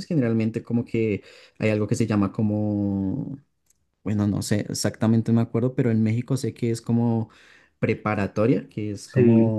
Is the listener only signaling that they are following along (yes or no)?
yes